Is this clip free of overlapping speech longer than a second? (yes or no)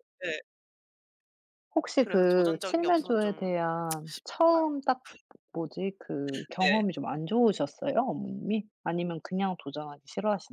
no